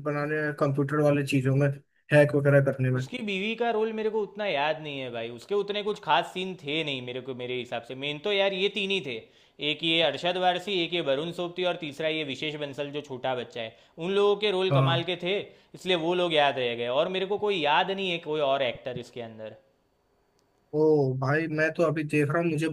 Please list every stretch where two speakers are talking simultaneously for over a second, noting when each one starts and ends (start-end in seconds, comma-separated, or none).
none